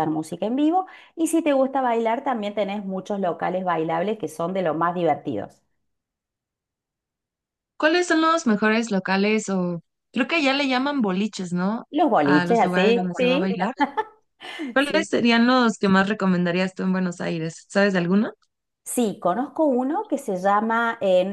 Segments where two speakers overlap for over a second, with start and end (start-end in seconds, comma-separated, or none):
12.2-13.5